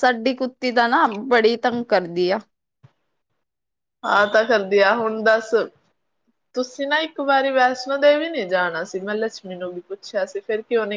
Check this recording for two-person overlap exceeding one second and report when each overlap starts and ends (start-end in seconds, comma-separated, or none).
none